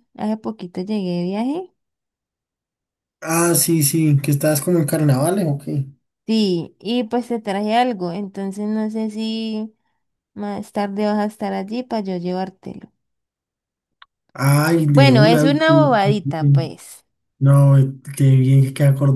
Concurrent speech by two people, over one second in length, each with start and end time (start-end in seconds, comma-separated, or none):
14.9-16.6